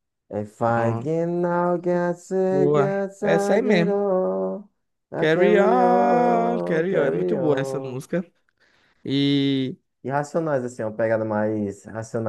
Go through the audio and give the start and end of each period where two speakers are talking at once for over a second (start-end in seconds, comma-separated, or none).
2.5-4.0, 5.2-8.0